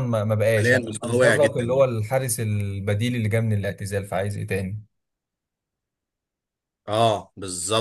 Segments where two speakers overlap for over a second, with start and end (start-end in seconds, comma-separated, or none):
0.6-1.9